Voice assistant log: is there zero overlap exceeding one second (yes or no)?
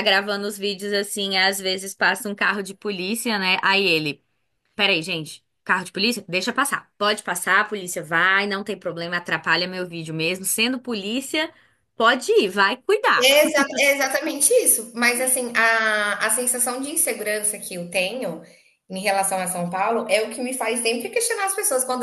yes